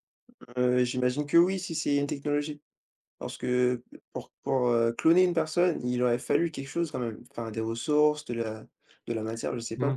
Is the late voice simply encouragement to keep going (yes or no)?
no